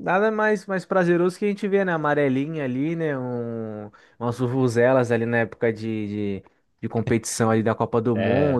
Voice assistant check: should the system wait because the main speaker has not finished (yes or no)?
yes